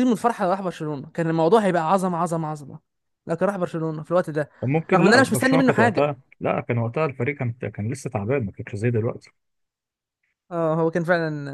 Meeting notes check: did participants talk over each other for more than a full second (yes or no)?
yes